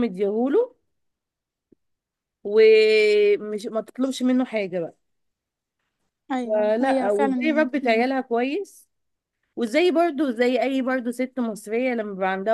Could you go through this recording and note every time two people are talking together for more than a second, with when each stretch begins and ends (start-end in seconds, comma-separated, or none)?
6.4-8.1